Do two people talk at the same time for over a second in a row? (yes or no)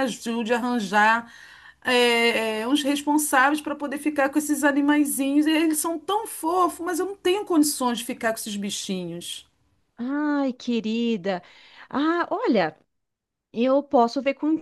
no